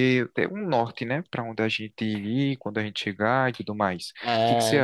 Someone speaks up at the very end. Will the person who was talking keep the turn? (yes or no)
no